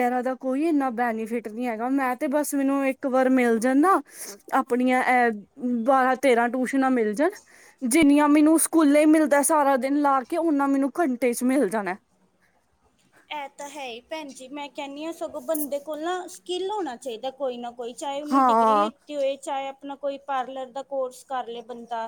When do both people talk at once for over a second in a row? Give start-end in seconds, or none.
none